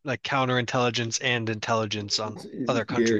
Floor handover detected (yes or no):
yes